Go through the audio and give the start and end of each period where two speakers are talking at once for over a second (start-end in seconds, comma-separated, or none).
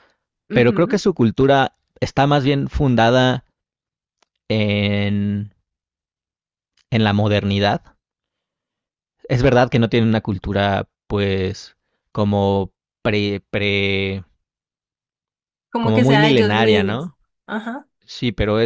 15.8-17.1